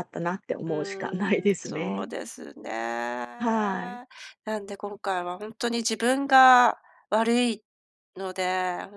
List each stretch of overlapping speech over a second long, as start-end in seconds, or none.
0.7-2.1